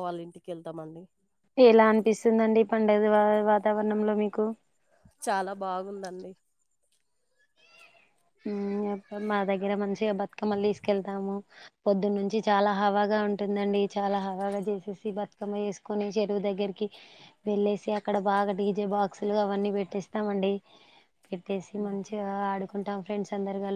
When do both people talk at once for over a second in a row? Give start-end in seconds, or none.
none